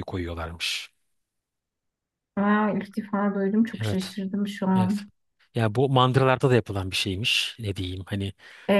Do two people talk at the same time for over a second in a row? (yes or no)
no